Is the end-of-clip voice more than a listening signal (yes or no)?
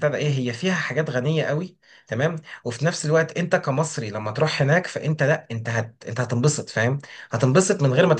no